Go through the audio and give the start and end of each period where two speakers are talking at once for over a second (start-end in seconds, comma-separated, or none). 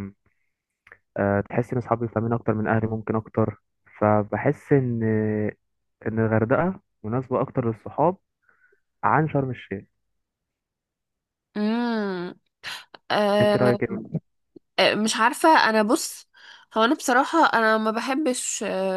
none